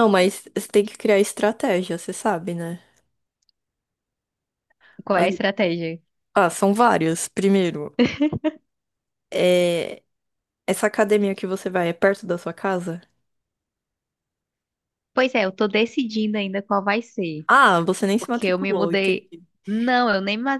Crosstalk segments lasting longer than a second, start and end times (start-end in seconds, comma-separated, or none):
18.2-19.4